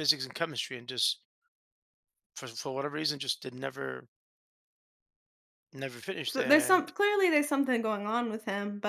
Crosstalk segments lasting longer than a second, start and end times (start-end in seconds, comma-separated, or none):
none